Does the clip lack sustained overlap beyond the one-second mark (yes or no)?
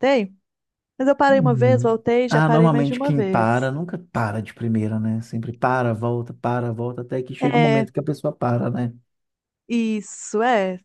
no